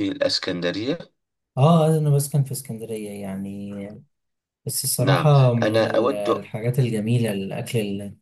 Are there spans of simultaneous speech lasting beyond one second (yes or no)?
yes